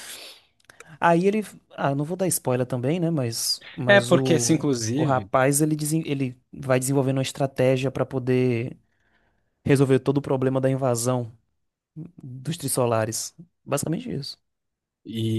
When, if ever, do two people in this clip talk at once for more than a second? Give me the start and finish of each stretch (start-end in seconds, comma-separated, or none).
3.9-5.3